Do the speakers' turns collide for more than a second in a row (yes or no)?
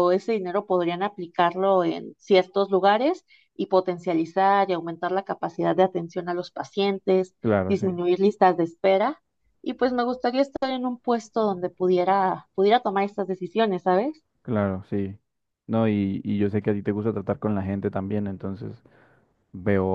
no